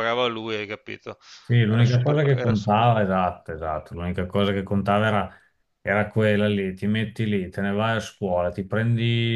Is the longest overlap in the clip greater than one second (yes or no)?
yes